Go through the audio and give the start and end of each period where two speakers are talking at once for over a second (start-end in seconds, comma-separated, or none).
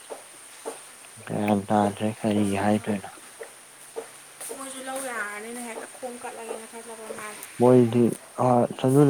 none